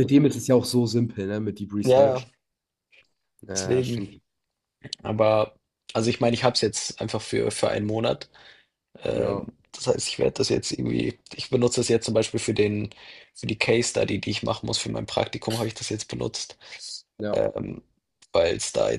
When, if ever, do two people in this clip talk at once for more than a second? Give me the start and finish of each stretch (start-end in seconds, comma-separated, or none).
none